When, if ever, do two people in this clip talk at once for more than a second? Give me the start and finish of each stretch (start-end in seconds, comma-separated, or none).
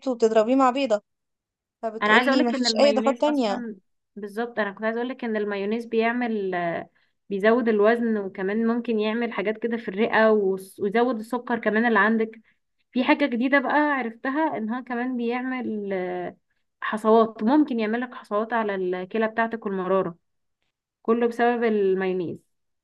2.0-3.6